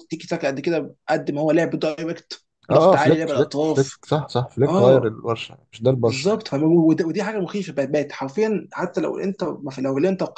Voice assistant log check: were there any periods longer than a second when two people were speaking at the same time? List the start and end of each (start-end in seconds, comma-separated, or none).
2.7-4.0